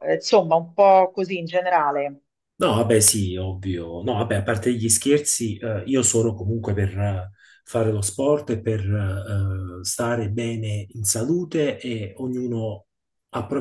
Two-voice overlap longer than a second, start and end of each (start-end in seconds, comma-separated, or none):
none